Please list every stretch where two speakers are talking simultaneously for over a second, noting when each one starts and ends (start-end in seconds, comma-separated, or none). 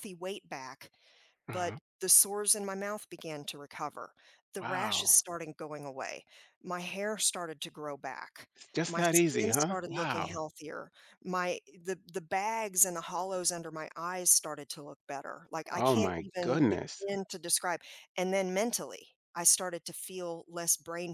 8.9-10.4, 15.7-17.0